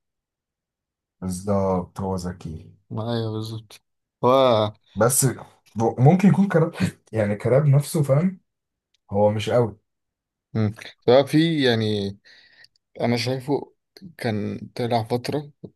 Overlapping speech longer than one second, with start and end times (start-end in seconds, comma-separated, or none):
none